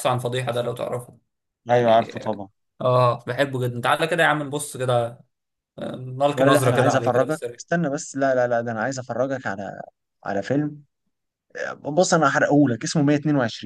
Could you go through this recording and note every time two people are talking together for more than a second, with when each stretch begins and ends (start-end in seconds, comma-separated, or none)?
6.3-7.6